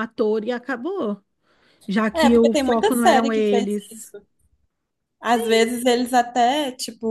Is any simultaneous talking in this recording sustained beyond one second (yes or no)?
yes